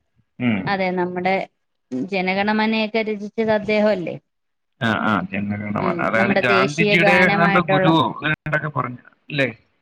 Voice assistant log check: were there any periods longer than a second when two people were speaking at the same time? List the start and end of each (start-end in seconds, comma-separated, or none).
5.8-7.9